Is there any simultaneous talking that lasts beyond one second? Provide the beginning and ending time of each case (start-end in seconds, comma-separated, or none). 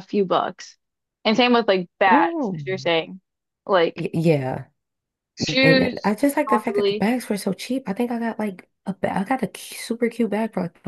5.6-7.1